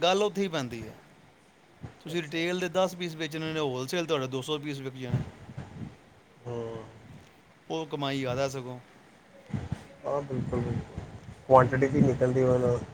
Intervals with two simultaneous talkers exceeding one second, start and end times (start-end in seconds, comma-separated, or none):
none